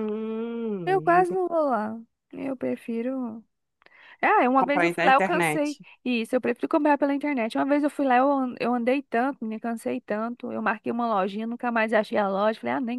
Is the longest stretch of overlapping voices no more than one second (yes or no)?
no